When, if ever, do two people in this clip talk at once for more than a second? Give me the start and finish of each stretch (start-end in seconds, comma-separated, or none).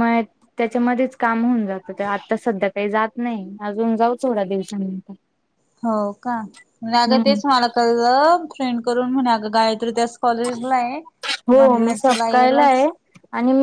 11.5-12.9